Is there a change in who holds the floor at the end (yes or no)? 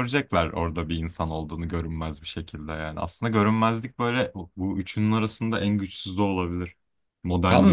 yes